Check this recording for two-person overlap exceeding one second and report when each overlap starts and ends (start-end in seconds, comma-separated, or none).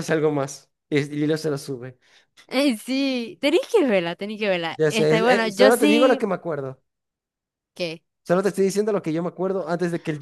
4.8-6.3